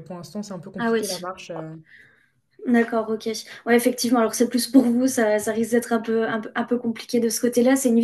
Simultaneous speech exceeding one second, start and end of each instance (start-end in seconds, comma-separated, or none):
none